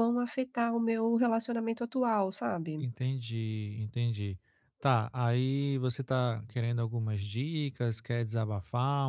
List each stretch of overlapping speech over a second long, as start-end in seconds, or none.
none